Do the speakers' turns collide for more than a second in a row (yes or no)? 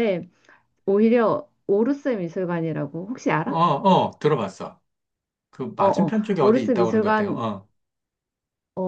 yes